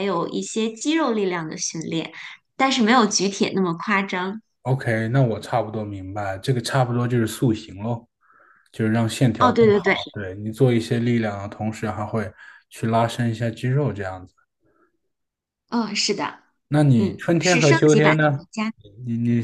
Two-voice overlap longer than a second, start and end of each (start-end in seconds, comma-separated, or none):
16.9-18.4